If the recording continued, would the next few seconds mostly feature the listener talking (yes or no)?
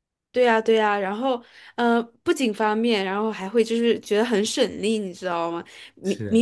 no